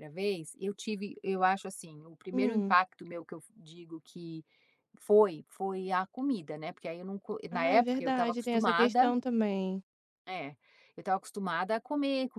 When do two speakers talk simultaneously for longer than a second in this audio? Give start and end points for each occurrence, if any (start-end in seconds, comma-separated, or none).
7.5-9.1